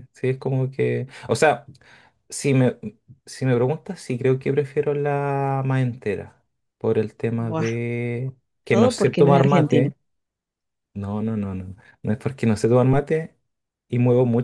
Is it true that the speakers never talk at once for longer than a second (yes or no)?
no